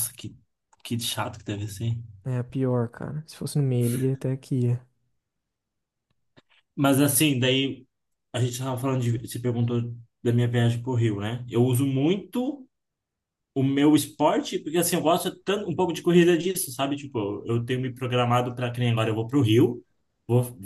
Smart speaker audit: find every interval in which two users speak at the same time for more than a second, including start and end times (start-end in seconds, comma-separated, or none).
none